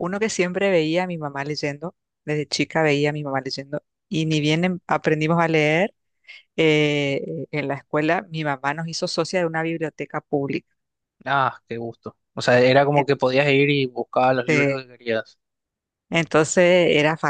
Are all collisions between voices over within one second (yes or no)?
yes